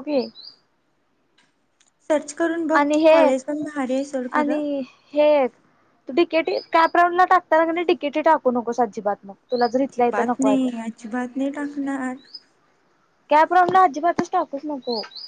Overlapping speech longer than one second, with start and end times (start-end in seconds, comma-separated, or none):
none